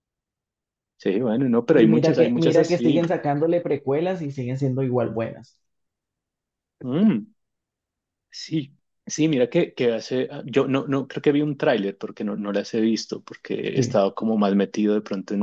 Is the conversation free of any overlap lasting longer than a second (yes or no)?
no